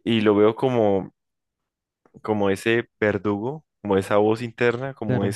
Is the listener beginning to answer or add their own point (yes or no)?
no